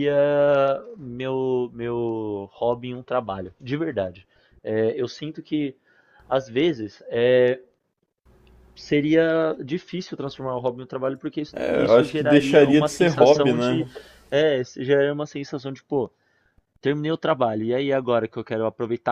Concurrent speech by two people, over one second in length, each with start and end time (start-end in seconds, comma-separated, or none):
11.5-13.8